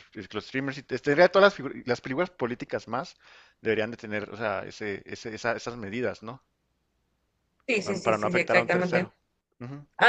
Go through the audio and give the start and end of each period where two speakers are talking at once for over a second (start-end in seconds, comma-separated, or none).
7.8-9.1